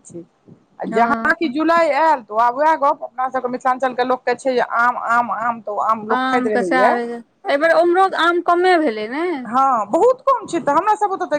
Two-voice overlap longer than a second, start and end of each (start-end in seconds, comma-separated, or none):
none